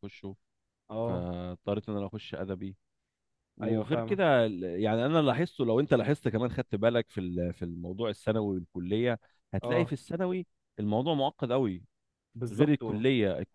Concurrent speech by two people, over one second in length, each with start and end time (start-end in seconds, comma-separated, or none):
none